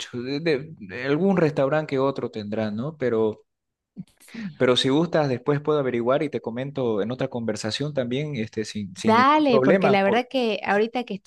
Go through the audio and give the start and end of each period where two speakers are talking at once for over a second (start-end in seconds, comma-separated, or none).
8.9-10.3